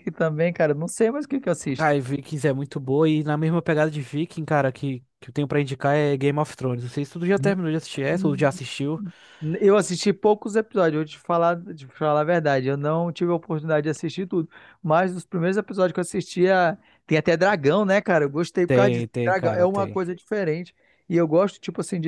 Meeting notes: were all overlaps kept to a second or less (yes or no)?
no